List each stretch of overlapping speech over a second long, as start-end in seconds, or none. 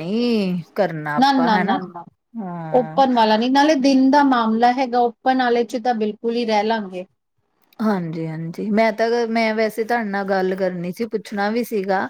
none